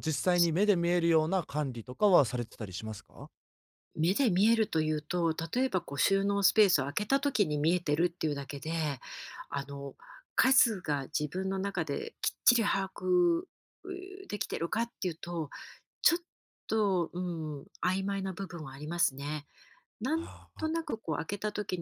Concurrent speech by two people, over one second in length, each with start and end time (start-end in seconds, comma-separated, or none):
none